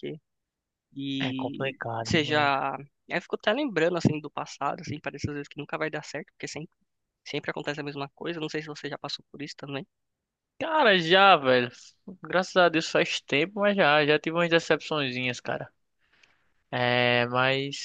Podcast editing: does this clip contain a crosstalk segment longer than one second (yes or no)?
yes